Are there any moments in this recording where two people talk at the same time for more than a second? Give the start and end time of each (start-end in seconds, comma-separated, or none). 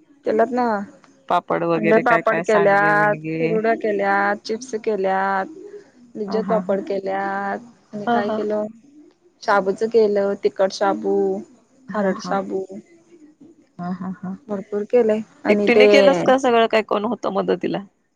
1.8-3.5